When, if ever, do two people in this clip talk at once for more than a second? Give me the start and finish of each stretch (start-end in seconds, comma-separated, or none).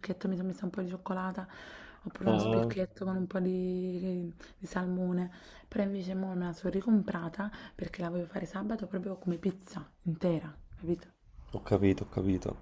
none